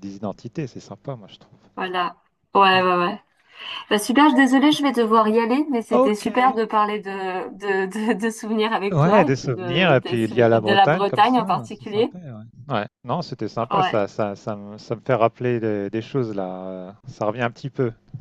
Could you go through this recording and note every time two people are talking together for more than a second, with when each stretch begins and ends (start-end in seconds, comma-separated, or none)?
8.9-12.1